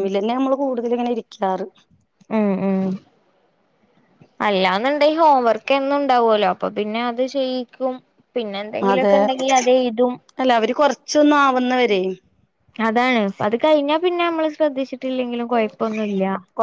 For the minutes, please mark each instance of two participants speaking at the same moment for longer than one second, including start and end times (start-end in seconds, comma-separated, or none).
none